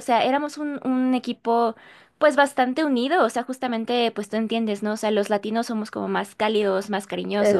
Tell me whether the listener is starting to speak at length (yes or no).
no